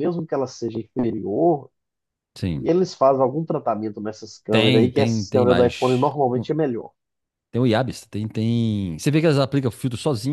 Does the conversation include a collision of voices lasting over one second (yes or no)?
yes